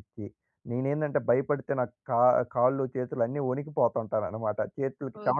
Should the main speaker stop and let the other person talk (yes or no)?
yes